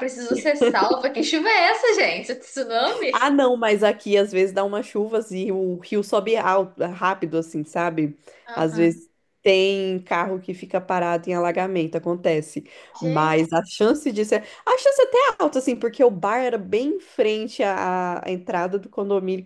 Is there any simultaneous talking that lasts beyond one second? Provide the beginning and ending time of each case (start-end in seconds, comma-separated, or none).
none